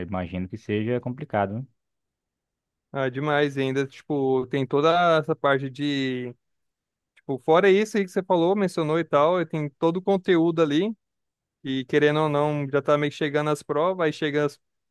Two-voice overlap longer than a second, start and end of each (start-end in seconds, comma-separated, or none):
none